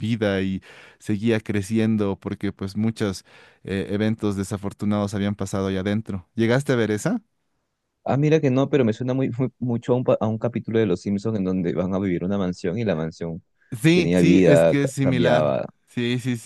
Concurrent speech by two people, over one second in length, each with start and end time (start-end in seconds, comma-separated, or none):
13.9-15.7